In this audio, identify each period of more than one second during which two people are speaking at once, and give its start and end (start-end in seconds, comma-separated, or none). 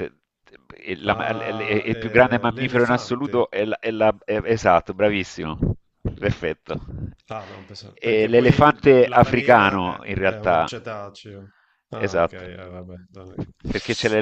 1.1-3.5, 8.0-10.7